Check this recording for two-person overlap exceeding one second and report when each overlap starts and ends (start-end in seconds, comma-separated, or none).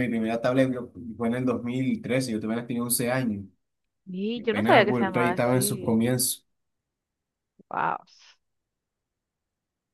4.5-6.0